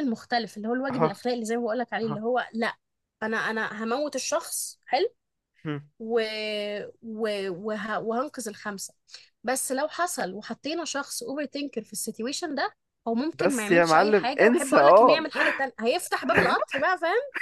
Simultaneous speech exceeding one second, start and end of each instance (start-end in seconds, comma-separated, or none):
13.3-15.3